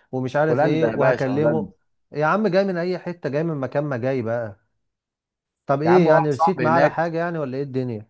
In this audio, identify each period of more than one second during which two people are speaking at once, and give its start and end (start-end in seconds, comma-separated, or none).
0.5-1.7, 5.9-7.1